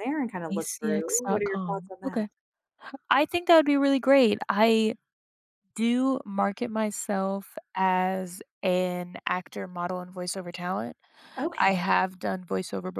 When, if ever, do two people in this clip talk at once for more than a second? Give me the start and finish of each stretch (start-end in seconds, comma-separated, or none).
0.5-2.3